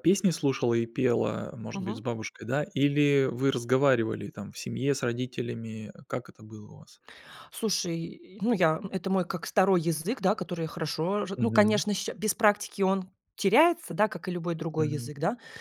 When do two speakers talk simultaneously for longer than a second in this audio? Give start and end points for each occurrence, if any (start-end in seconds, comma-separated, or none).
none